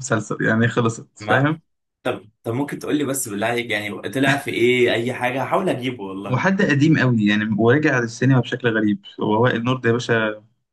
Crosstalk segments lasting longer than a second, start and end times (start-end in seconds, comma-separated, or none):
none